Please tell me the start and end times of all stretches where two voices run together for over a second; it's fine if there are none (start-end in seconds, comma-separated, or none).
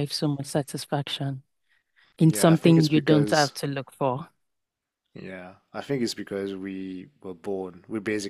2.3-3.5